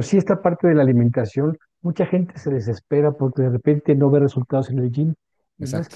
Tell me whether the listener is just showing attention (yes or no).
yes